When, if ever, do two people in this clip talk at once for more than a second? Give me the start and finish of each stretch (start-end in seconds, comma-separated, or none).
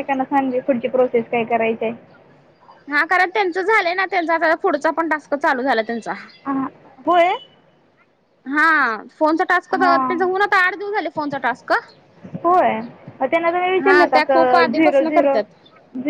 13.8-15.4